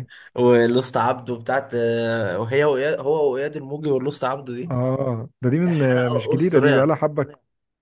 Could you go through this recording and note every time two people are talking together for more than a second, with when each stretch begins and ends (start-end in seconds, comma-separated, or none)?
5.7-6.9